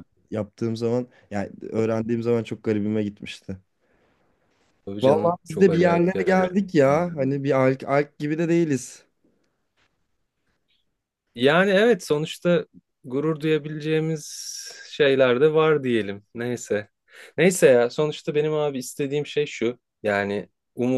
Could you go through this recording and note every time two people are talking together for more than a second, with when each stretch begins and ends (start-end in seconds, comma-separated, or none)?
5.0-6.5